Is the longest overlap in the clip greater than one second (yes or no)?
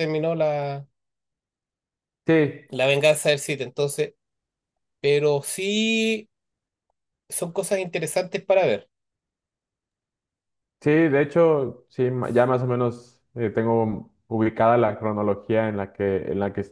no